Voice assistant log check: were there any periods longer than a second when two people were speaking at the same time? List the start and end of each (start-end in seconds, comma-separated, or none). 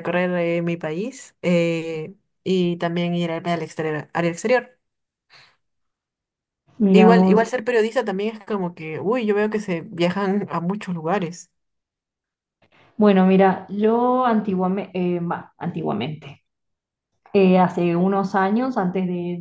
none